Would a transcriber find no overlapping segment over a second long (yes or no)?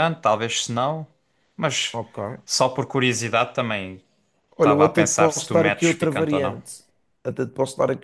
no